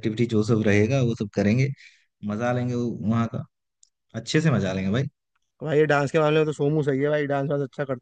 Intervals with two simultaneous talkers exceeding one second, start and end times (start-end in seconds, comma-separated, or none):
none